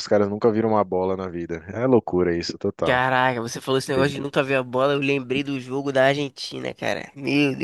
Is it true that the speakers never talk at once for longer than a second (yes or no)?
yes